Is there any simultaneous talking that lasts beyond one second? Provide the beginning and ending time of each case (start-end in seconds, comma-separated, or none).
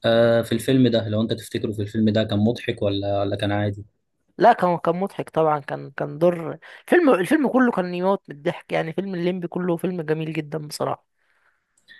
none